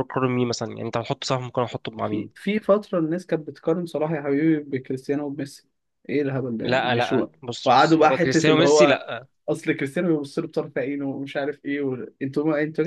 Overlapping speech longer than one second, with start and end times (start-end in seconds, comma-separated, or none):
6.6-9.0